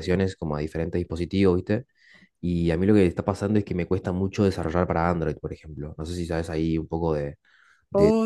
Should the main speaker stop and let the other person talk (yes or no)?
yes